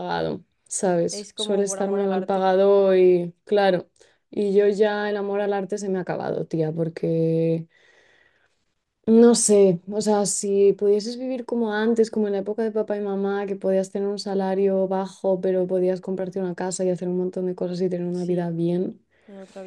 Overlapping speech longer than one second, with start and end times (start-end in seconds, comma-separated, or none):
1.1-2.5